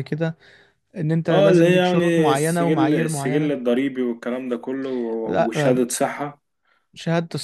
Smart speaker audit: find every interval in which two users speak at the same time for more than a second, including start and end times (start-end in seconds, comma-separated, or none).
1.3-3.5